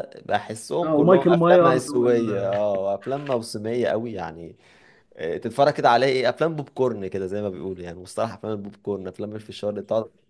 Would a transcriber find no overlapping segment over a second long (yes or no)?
no